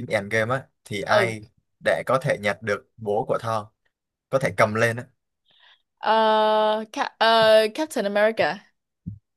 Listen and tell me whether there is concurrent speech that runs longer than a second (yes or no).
no